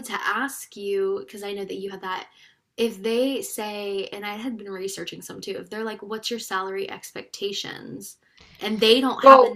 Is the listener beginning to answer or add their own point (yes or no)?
yes